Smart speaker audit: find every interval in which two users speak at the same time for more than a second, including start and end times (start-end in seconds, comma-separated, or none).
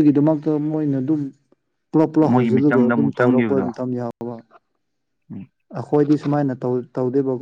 2.3-3.7